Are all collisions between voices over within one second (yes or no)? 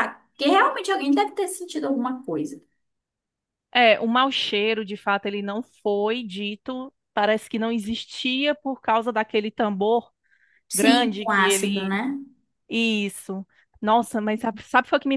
no